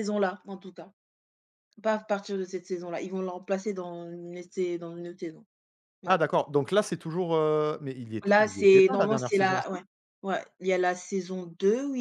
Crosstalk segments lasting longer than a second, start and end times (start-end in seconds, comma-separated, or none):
8.2-9.8